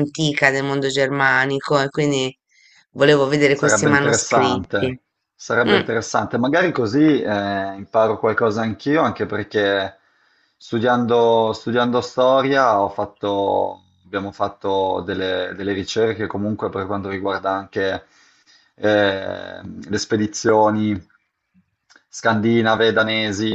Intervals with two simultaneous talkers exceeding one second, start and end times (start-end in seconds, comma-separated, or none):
3.5-5.0